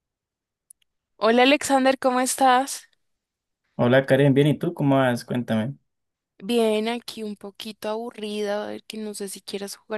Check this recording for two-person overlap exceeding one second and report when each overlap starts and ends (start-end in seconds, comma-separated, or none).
none